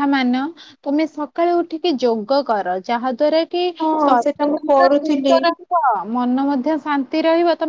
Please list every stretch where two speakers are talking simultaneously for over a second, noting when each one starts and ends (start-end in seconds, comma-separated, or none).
4.0-5.4